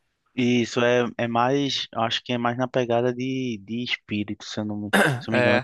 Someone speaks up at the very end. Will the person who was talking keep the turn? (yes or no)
yes